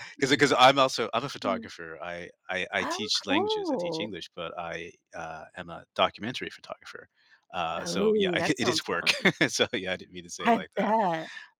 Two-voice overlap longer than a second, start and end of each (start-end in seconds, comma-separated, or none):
2.8-4.1, 7.8-9.1